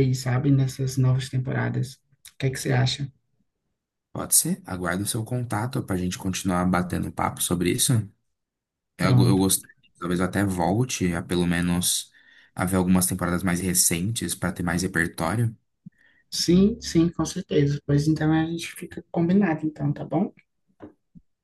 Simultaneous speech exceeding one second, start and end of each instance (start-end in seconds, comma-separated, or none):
none